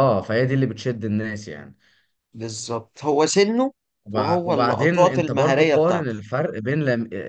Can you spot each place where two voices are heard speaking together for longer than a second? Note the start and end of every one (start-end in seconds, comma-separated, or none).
4.1-6.2